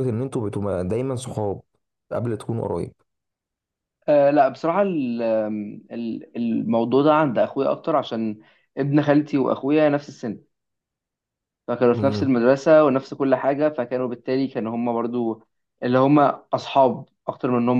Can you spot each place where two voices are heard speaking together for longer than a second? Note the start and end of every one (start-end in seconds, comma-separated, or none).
none